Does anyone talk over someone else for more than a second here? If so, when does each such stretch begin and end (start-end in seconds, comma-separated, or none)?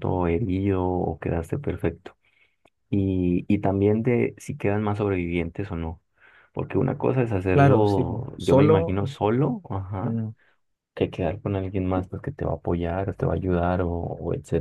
7.5-9.0